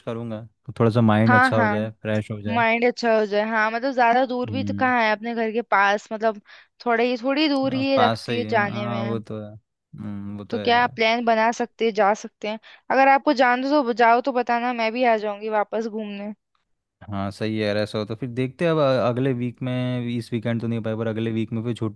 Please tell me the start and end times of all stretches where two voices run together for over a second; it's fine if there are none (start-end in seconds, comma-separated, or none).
7.7-9.2